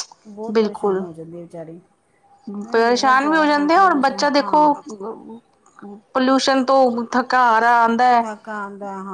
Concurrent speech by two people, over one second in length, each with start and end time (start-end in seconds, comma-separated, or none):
2.7-4.7